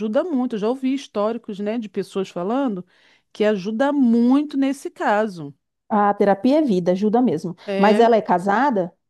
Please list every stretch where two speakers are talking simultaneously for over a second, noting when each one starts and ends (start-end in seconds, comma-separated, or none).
none